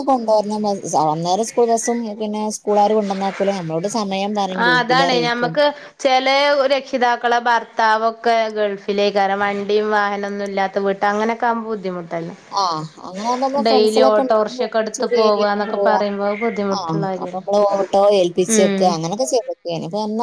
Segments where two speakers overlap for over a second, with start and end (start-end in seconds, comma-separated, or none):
13.7-15.0